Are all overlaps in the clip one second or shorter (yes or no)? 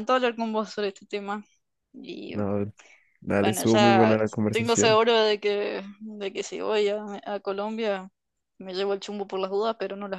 no